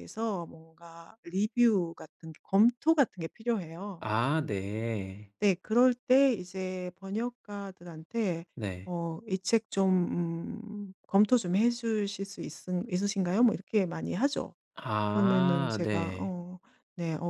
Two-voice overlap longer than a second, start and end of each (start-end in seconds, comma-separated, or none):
15.1-16.4